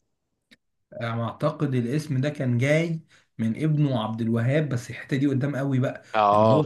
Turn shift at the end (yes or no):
no